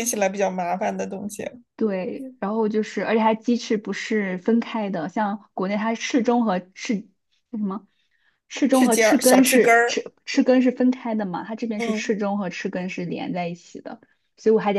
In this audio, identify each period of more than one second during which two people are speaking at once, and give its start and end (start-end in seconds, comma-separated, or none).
8.7-10.0